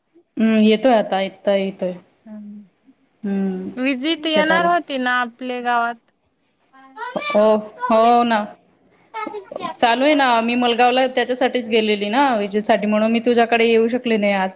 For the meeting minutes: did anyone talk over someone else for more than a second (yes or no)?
no